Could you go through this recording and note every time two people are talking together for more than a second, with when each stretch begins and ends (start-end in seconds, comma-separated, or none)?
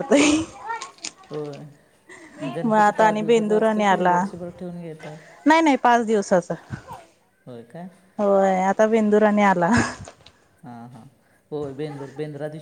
2.6-4.2